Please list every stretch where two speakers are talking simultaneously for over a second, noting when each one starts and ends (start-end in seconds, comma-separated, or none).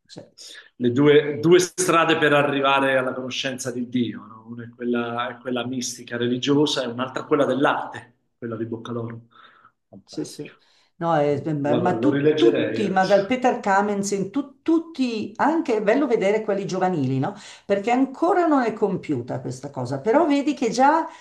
11.2-13.3